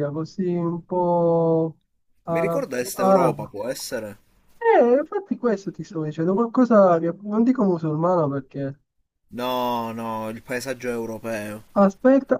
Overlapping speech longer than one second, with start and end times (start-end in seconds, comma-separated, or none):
2.3-3.6